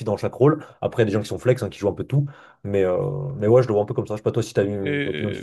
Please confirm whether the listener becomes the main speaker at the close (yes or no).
yes